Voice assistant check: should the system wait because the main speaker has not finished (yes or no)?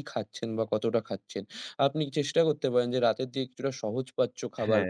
yes